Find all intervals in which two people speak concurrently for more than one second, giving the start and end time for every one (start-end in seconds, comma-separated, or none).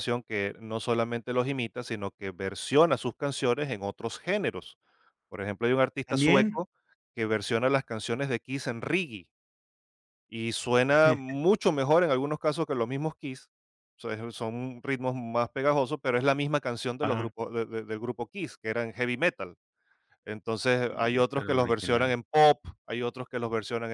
20.9-22.2